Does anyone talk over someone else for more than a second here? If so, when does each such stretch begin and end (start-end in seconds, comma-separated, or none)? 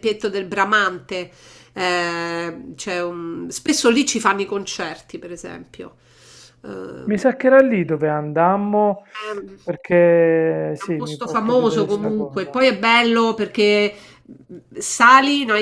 10.8-12.6